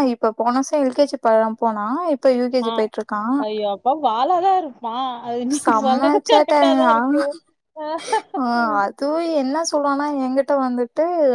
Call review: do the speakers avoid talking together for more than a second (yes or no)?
no